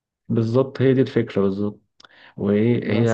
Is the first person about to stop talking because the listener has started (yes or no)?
no